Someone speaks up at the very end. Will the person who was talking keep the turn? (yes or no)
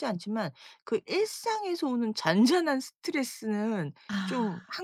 yes